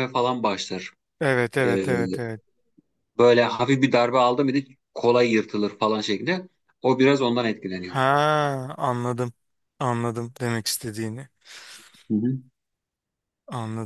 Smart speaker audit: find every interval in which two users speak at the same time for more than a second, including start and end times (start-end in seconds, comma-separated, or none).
none